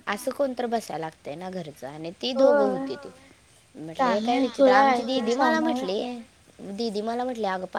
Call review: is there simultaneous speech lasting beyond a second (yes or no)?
yes